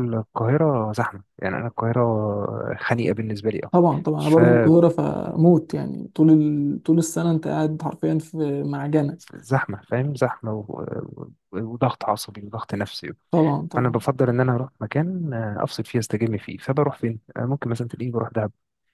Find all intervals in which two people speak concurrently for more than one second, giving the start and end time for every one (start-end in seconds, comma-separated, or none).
none